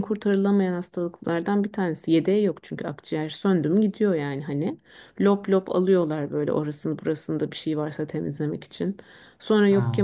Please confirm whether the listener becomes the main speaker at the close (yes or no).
no